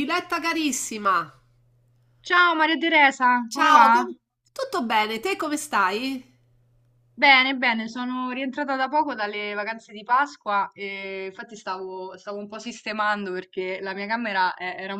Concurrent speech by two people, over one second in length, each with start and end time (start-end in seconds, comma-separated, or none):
none